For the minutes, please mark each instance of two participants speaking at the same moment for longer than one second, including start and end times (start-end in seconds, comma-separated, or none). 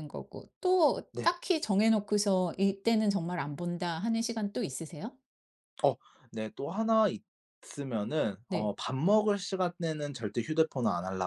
none